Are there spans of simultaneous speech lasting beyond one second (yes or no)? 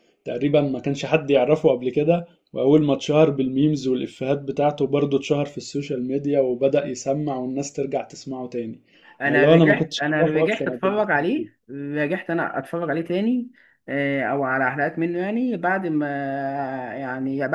yes